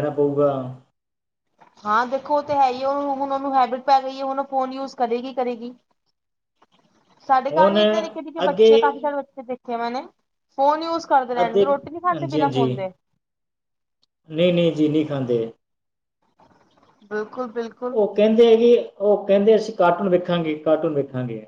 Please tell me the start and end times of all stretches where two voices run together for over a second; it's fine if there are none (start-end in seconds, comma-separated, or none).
none